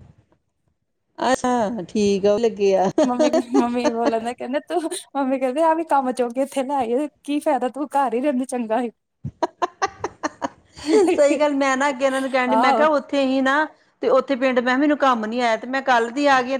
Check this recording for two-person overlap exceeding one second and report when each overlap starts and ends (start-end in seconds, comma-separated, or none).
none